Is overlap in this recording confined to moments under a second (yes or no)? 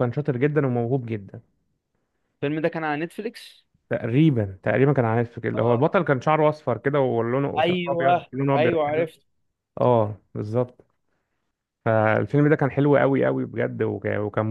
no